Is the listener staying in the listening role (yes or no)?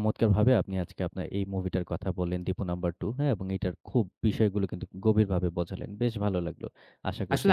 no